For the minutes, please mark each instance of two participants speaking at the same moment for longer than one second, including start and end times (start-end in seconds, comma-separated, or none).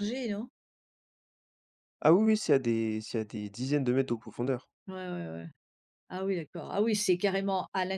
none